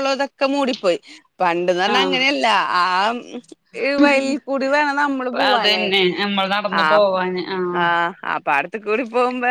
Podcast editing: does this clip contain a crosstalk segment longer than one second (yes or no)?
no